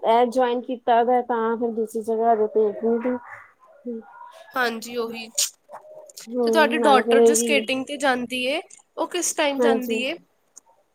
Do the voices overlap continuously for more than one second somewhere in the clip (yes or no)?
yes